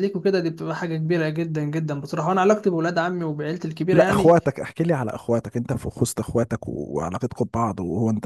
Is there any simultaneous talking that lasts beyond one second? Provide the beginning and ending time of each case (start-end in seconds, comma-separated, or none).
none